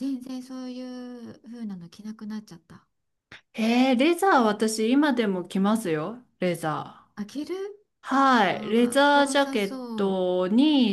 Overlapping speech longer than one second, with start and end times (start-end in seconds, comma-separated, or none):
8.5-10.2